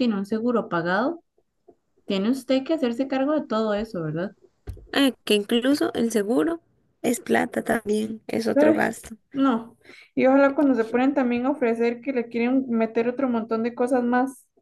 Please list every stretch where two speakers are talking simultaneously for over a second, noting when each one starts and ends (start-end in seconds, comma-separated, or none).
none